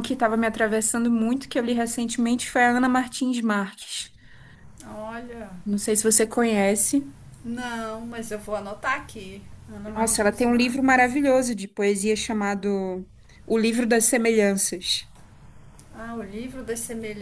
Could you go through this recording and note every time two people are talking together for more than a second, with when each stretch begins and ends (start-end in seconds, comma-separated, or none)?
9.9-11.2